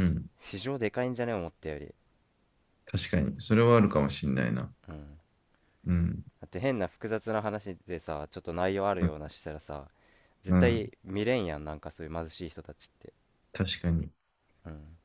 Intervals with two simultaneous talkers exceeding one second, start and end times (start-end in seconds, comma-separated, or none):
none